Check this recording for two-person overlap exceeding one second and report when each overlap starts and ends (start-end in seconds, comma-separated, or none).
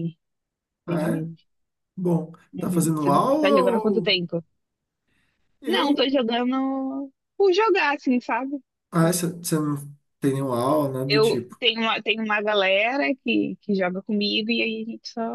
2.5-4.2